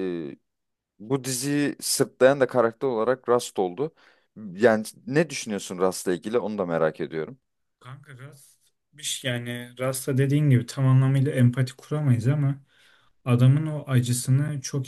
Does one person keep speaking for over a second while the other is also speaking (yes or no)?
no